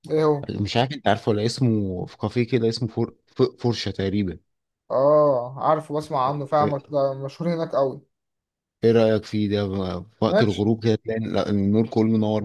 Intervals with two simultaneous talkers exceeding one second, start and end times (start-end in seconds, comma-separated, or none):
none